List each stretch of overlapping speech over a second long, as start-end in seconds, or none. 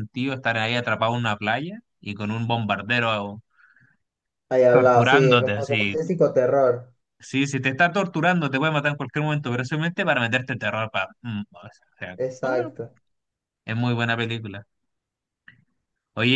4.7-6.0